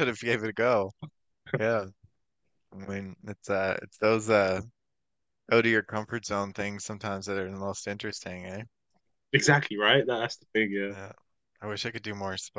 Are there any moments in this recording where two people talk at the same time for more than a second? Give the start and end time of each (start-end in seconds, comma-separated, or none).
none